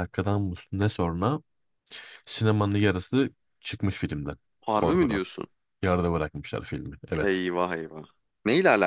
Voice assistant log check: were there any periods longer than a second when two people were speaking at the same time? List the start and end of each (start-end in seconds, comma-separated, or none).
none